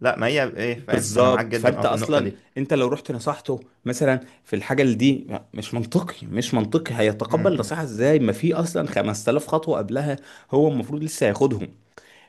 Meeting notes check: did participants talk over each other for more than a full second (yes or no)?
yes